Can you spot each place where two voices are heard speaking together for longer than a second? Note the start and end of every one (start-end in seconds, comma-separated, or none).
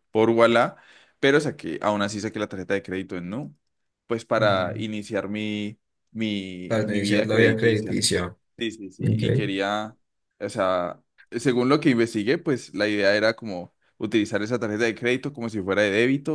6.7-8.0